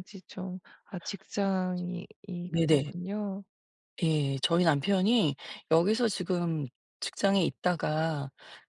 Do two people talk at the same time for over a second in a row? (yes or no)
no